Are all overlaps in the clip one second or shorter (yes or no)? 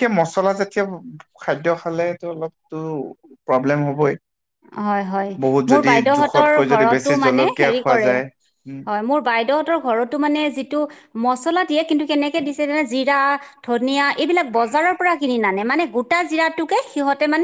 no